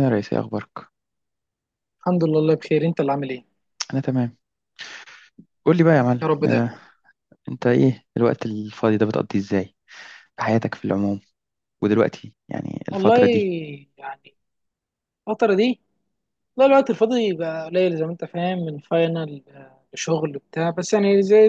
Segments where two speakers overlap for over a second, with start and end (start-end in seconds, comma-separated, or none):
none